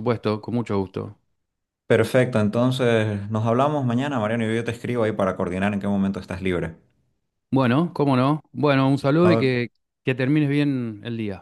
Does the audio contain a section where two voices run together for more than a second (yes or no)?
no